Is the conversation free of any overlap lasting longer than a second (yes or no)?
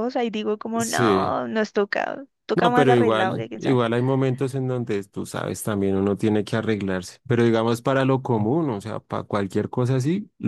no